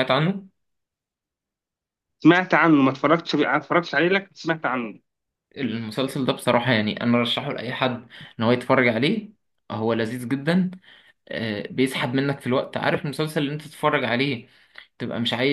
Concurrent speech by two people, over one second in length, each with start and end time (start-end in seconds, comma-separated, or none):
none